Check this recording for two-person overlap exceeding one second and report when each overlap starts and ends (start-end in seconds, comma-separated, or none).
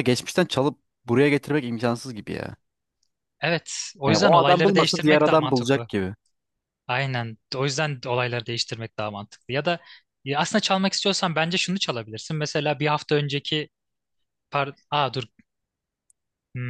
4.1-5.9